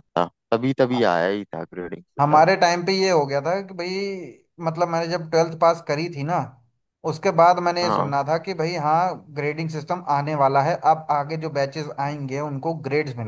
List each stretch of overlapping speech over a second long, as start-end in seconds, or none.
none